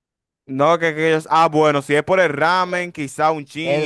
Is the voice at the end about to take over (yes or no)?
yes